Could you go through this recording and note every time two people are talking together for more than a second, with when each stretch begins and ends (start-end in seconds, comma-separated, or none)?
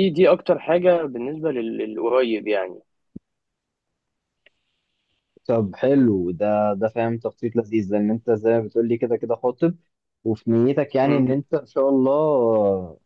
none